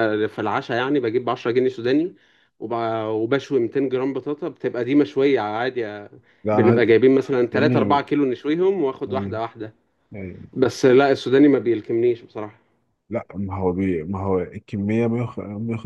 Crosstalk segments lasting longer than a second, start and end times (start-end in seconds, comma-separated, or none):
none